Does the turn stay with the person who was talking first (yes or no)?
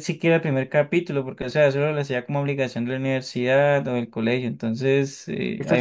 yes